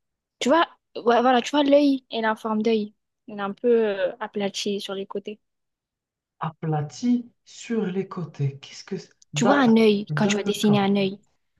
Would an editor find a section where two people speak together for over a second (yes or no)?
yes